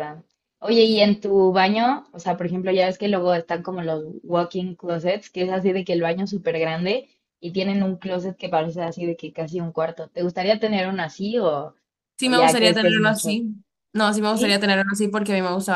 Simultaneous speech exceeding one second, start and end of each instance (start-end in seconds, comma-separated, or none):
12.2-13.4